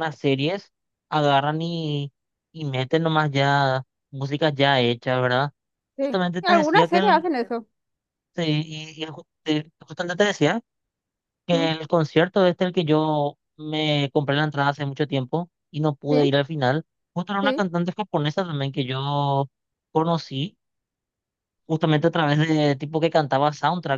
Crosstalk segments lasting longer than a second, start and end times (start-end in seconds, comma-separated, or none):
6.0-7.2